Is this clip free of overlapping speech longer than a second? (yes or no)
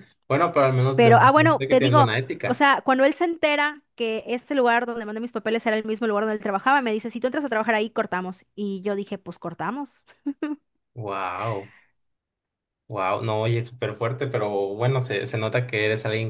no